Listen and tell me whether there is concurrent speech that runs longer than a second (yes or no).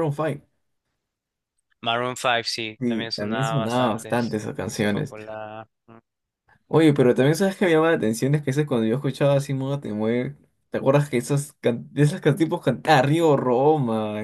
yes